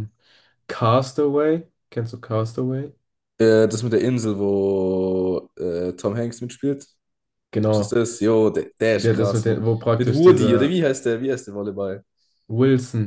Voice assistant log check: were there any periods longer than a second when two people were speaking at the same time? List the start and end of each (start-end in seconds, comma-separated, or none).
8.9-10.8